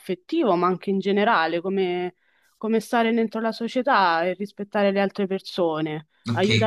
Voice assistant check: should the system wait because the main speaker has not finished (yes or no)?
no